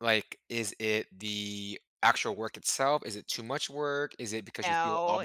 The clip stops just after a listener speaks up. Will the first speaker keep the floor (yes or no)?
yes